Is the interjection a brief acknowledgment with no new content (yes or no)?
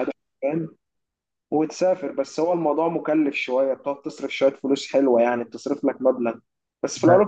yes